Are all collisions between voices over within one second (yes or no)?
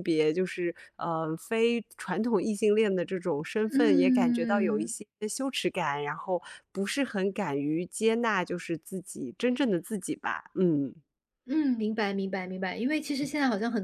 no